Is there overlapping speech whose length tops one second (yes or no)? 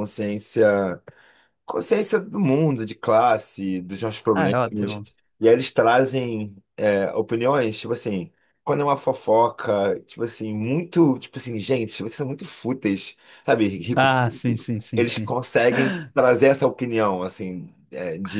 yes